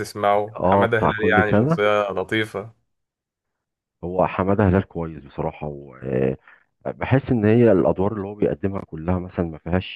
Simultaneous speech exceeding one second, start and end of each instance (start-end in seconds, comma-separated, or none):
0.6-1.8